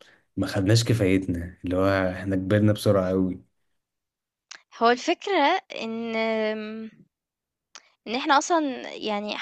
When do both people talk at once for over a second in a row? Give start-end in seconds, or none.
none